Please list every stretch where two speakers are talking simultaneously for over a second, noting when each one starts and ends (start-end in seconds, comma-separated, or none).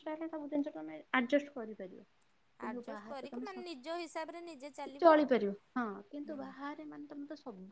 2.6-5.3